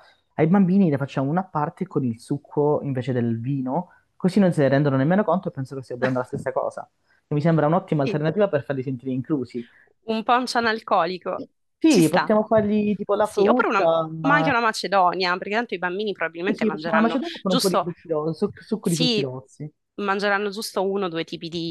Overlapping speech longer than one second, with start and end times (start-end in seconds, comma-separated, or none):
13.2-14.5, 16.4-17.9